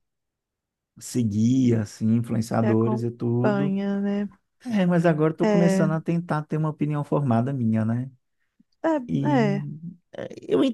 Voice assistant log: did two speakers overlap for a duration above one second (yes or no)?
yes